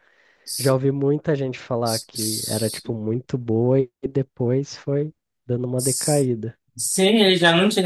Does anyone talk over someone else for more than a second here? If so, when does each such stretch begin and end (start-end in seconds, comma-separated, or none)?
none